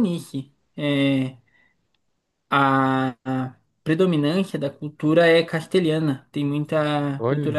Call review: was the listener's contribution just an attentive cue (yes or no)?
yes